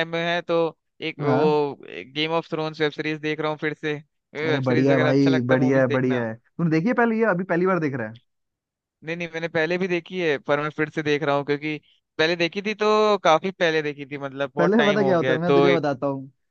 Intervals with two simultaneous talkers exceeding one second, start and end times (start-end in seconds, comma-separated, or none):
4.5-6.2, 14.6-15.8